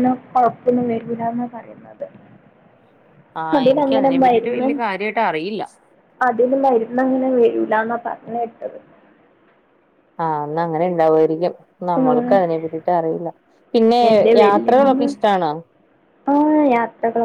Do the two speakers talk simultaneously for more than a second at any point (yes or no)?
no